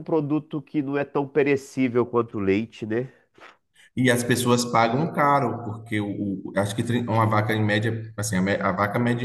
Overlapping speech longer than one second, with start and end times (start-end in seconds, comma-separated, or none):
none